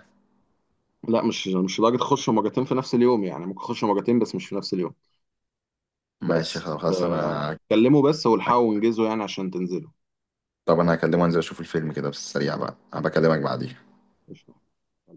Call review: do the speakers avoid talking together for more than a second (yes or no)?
no